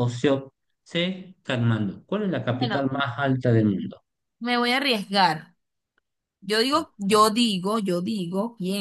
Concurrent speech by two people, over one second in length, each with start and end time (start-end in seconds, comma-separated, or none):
none